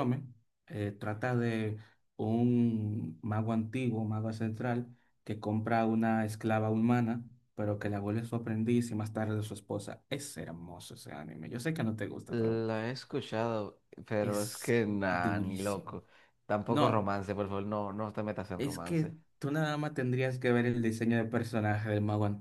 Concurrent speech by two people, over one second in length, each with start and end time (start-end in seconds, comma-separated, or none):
14.2-16.0